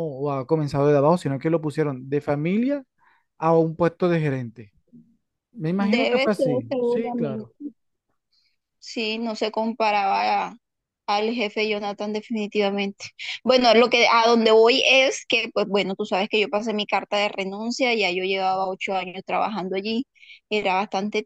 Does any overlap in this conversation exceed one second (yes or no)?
yes